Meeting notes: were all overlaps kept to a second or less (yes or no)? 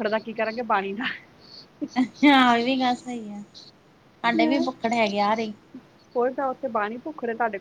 yes